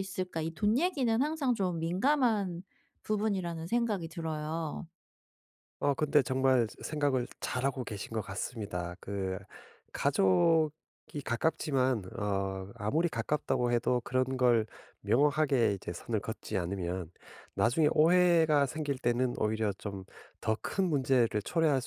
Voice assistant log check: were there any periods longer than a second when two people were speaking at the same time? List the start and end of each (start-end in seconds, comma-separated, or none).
none